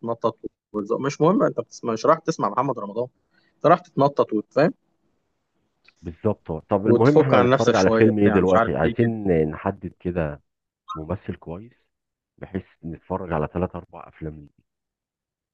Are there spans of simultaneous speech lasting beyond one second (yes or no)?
yes